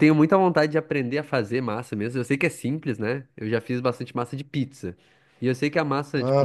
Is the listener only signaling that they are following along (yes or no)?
yes